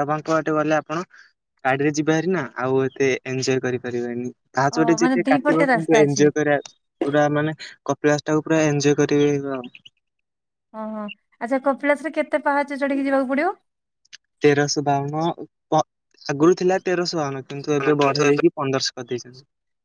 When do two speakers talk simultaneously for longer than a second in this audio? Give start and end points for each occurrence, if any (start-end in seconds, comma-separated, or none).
4.8-6.2